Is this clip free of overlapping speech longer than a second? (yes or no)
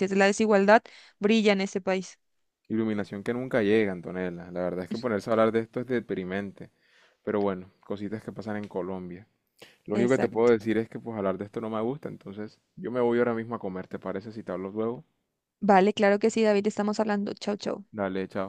yes